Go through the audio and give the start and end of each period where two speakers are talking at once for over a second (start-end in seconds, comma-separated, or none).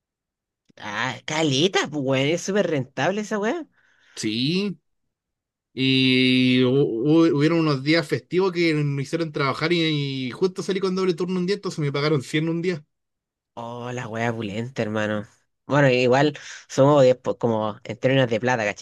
none